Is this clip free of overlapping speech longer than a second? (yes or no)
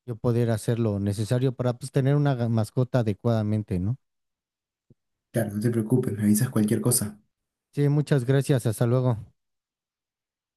yes